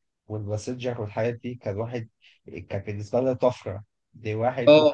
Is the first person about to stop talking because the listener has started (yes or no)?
no